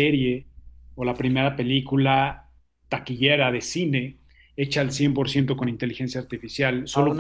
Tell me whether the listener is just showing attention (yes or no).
no